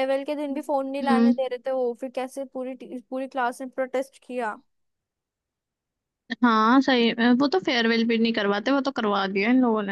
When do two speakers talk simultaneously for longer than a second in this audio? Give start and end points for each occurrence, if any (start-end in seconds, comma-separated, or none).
none